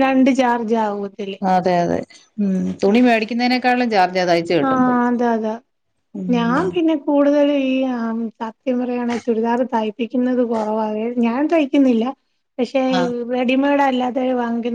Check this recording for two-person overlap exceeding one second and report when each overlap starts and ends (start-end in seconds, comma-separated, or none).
none